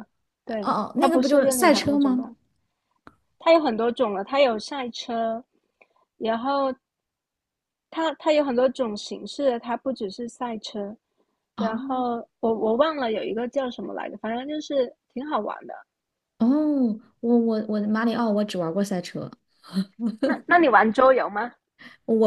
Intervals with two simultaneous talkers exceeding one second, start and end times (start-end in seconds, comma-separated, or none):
0.6-2.3